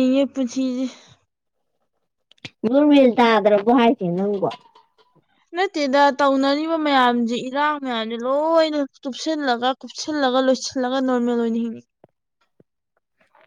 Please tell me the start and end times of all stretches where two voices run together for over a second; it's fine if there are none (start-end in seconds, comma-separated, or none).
none